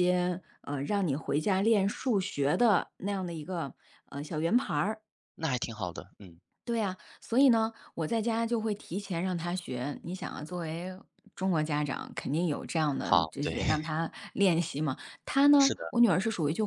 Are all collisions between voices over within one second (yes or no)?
yes